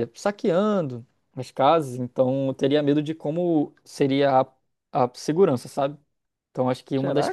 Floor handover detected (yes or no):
yes